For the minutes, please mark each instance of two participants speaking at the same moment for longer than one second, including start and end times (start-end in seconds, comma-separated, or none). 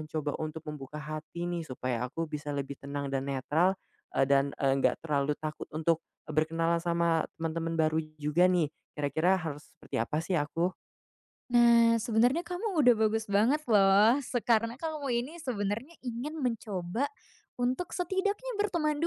none